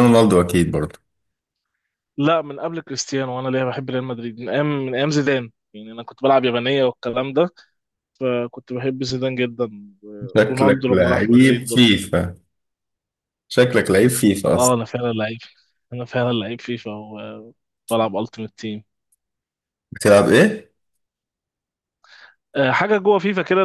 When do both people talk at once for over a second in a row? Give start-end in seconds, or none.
10.5-11.8